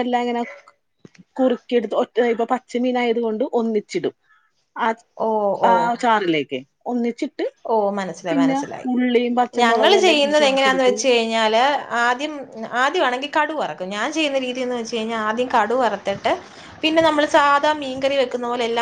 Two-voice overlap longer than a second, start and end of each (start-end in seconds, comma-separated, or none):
9.6-10.9